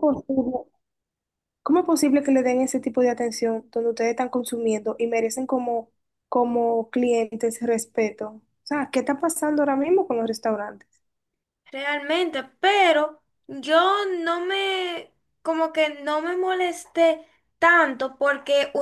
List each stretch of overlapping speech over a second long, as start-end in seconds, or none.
none